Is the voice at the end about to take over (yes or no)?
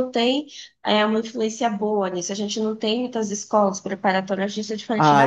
yes